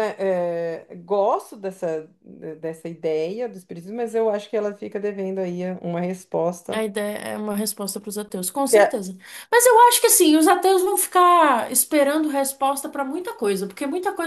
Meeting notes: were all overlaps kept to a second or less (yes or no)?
yes